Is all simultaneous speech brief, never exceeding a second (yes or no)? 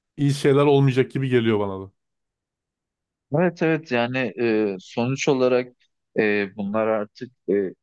yes